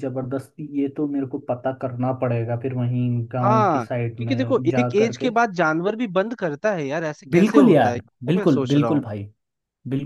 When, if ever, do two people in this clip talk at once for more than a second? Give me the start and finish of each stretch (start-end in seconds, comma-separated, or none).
3.4-5.3, 7.3-9.0